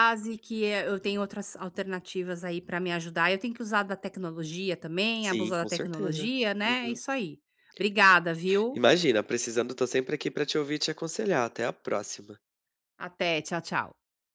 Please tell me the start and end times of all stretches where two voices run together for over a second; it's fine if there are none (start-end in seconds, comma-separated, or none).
5.2-7.0